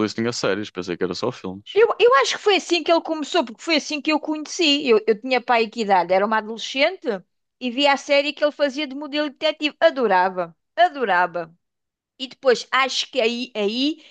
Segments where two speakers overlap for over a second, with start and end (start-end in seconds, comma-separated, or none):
none